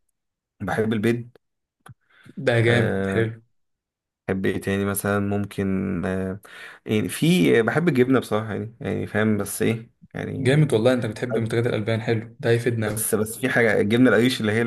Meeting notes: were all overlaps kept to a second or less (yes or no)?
yes